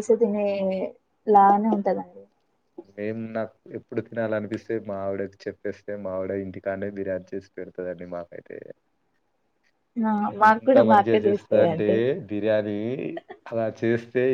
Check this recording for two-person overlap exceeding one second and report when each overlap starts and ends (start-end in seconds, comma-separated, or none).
10.5-11.9